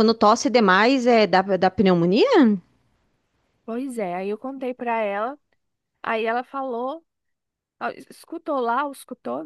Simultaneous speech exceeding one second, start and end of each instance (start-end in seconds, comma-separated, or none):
none